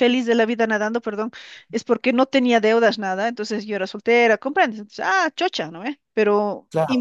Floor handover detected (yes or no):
no